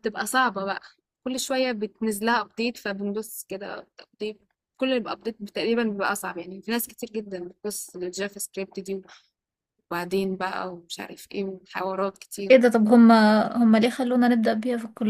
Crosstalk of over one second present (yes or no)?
no